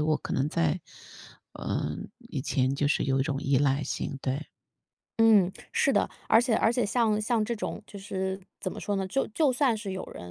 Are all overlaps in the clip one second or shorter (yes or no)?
yes